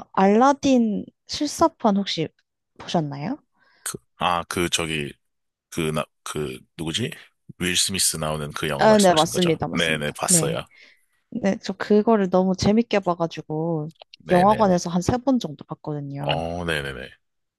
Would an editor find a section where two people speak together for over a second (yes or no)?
yes